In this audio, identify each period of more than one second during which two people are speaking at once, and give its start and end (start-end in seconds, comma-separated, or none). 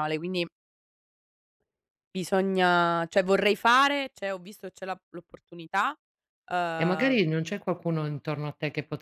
none